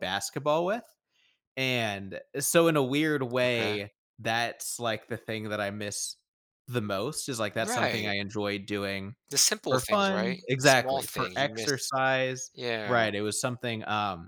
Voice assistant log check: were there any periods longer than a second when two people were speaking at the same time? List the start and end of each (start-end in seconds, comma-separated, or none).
9.7-11.9